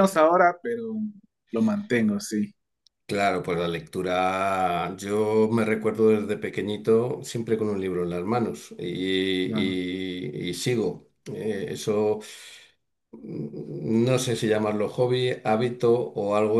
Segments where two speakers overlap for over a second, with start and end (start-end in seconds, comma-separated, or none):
none